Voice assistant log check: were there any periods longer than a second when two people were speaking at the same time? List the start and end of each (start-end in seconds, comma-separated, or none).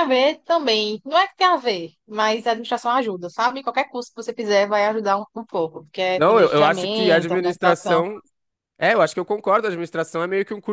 6.2-8.0